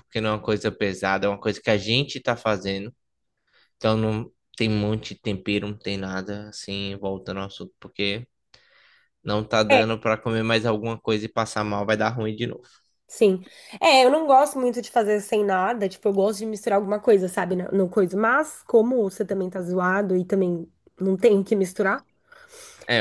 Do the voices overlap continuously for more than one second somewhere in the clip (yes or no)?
no